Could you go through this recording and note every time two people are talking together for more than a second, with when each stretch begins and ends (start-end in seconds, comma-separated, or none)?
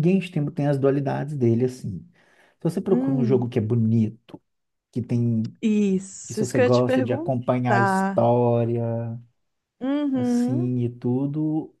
6.3-8.3